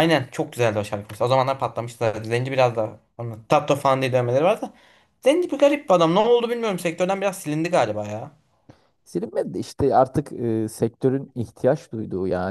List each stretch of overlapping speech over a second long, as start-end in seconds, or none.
none